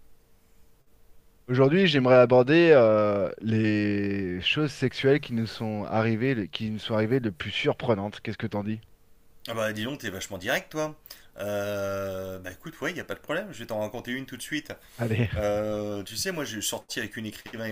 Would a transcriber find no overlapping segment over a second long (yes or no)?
yes